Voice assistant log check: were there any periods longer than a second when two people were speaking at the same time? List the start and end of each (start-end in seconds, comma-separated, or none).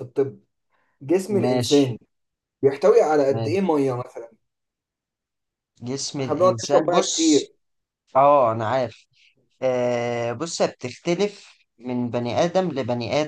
6.2-7.4